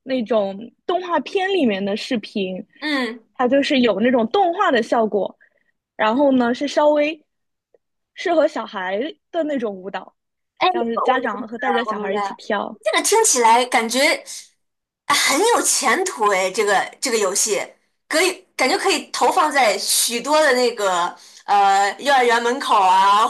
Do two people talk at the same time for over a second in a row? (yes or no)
yes